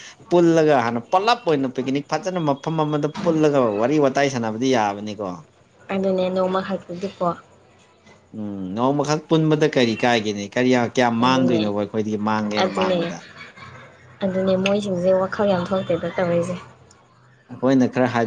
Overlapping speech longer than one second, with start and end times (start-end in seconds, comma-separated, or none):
none